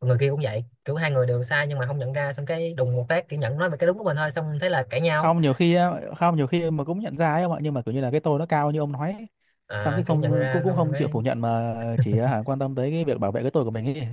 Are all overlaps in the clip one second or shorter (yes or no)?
no